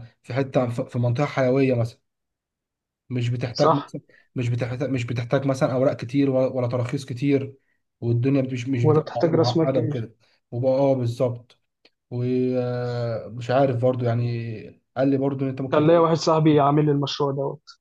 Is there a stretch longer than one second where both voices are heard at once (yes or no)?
yes